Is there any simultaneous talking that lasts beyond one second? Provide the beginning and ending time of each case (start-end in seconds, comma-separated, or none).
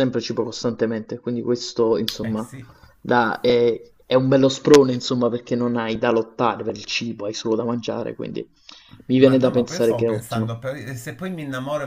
9.2-10.5